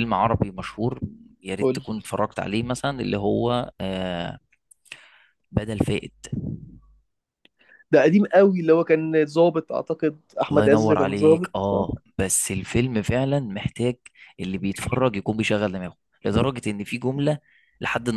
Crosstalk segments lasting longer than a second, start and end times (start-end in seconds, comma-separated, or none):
10.5-11.9